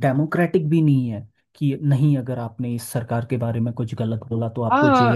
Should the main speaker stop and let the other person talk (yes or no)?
yes